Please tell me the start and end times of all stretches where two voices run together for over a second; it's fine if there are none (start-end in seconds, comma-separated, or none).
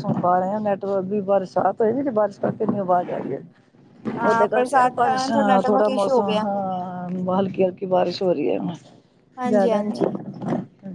4.2-6.4